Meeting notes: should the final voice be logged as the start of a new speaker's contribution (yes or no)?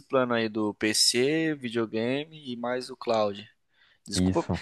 no